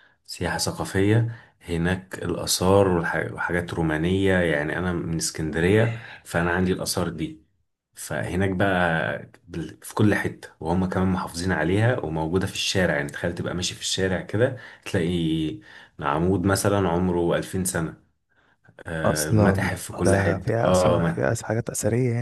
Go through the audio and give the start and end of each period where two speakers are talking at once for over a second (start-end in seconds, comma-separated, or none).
19.1-21.4